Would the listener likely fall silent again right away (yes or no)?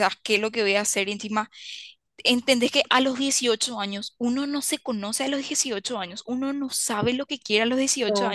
yes